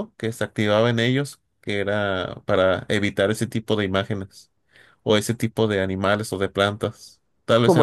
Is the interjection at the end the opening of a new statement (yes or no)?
yes